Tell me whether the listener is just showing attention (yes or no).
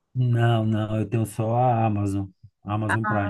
no